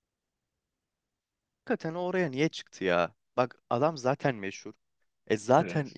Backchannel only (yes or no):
yes